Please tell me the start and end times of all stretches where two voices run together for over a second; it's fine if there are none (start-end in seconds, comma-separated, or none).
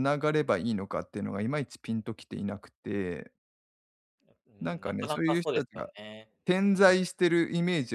4.6-5.9